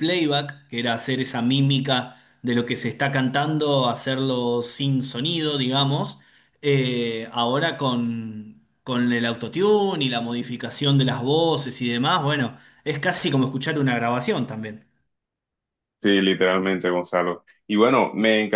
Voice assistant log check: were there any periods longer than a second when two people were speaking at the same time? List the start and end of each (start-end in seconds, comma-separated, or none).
none